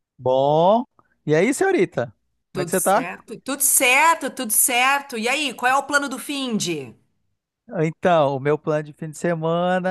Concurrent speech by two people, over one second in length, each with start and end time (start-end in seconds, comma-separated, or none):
none